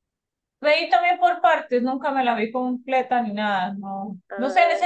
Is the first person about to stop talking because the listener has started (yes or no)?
no